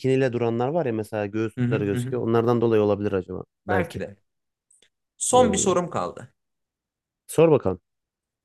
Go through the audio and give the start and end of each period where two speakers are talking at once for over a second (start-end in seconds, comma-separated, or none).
none